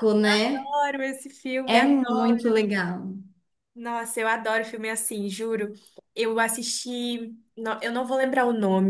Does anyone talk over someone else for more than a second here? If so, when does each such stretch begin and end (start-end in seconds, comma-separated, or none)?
none